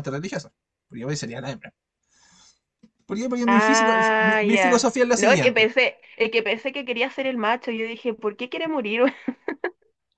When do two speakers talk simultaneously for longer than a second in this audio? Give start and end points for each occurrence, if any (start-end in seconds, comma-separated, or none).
3.5-5.7